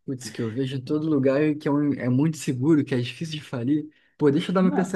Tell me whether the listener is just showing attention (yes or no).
yes